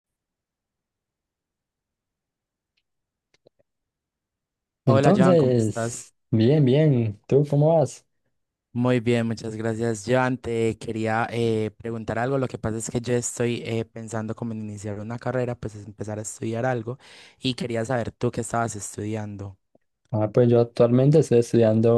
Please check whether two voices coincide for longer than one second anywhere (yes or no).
yes